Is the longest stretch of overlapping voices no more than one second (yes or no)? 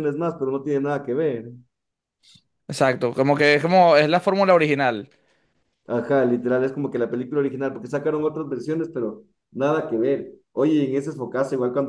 yes